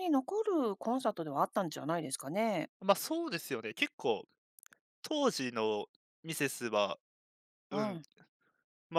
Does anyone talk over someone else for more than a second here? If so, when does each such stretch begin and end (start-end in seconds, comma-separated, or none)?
none